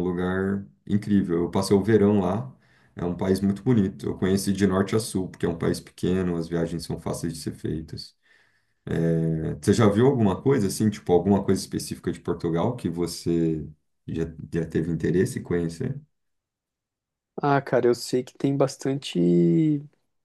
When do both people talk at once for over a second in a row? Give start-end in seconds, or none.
none